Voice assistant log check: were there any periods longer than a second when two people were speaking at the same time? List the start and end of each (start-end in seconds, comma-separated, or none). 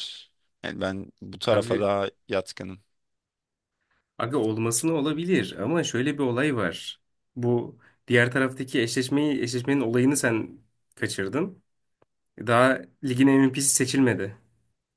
none